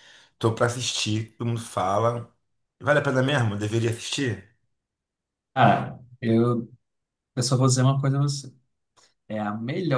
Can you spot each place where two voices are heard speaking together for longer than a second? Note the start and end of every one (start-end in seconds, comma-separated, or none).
none